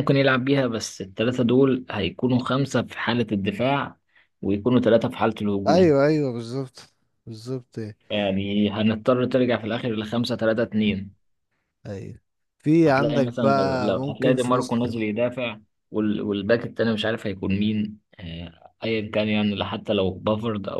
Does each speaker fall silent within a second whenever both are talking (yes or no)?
no